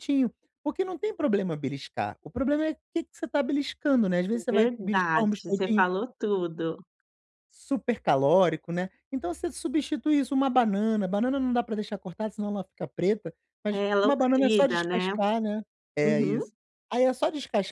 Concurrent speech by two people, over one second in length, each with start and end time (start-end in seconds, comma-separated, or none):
4.5-5.8, 13.7-15.1